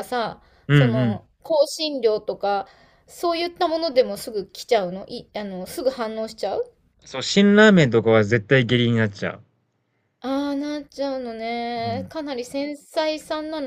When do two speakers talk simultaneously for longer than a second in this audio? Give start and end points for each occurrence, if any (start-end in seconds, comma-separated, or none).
none